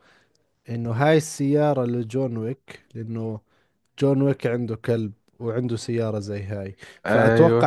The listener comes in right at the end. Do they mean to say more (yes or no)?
no